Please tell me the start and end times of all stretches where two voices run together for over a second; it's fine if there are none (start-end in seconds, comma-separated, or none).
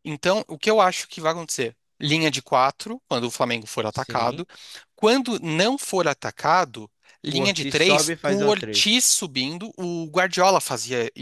7.3-9.0